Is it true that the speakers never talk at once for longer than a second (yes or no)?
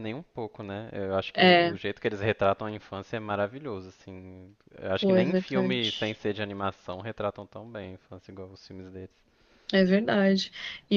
no